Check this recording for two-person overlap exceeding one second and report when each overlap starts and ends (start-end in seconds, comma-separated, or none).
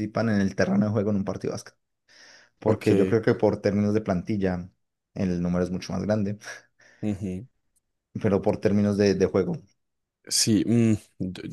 none